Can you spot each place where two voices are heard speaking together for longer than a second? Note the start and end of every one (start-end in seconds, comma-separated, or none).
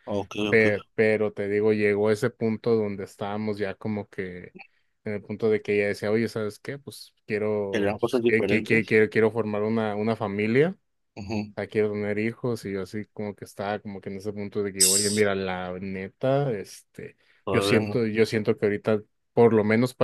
7.7-9.0